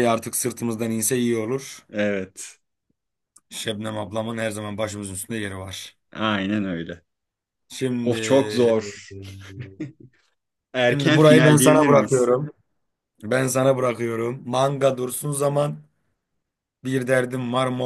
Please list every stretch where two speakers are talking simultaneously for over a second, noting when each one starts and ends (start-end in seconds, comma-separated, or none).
10.9-12.3